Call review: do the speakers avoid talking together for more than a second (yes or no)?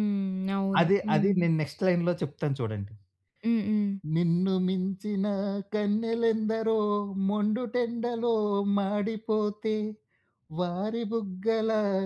yes